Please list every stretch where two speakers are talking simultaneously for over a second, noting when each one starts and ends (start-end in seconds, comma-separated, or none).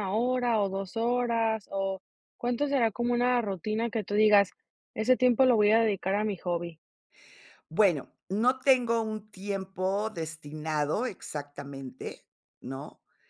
none